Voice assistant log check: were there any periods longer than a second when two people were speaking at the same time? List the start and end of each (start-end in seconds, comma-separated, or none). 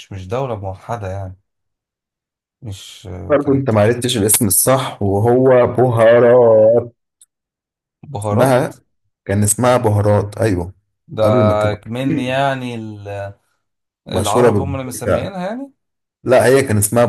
14.1-15.3